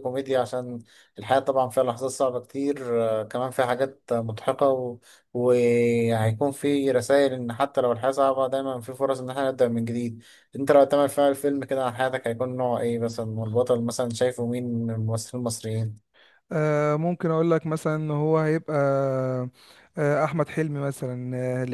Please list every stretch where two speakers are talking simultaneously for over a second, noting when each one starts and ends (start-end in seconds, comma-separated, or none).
none